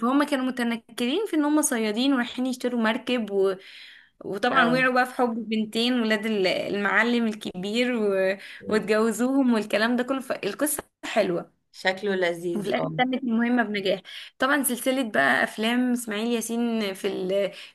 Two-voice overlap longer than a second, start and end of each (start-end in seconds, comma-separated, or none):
none